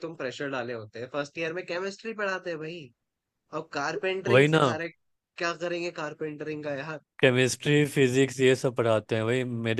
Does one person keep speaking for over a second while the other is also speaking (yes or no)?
no